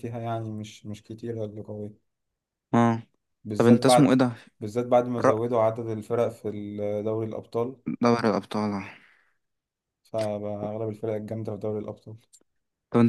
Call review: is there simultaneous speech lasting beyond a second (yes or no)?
no